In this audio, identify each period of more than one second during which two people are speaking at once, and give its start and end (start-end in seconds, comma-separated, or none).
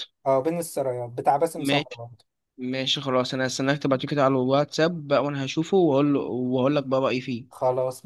none